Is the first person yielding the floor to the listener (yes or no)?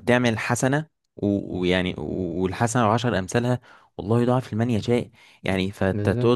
no